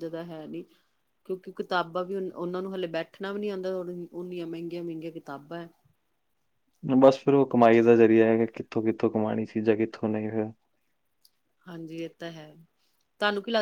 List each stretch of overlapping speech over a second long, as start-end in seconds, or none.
none